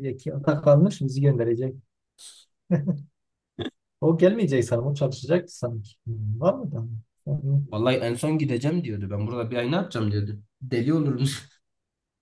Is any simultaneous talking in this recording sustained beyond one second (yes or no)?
no